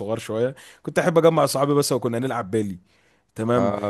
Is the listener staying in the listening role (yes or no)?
yes